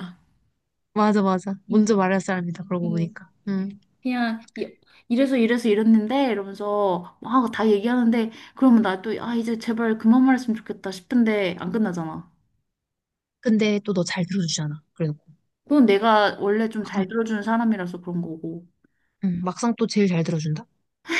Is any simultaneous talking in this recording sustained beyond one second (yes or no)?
no